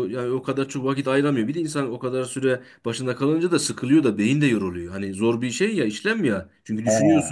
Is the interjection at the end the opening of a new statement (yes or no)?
no